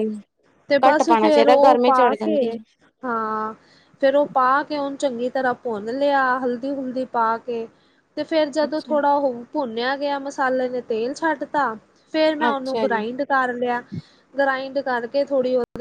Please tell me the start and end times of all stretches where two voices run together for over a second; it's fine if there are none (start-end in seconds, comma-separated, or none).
0.9-2.6